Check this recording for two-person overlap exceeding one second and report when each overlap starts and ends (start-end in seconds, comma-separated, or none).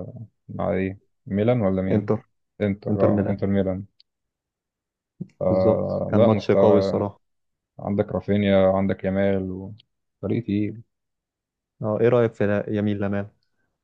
5.4-7.0